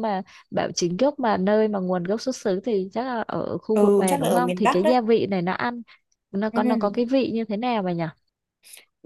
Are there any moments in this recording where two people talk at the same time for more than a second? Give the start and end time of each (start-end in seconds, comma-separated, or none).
3.7-5.0